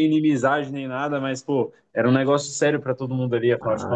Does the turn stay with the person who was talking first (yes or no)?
no